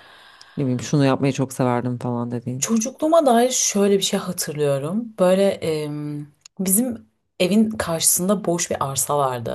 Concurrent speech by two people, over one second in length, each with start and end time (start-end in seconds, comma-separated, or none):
none